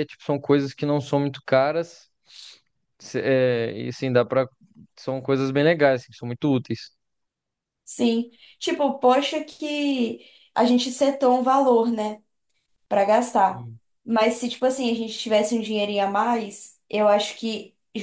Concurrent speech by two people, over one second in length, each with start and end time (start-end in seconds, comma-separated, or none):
none